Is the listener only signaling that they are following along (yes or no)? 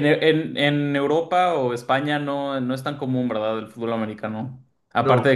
yes